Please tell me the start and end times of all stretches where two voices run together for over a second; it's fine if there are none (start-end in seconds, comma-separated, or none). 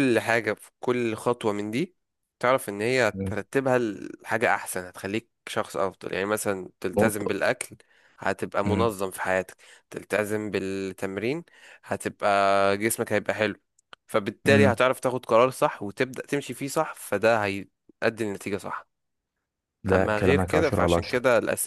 19.9-21.2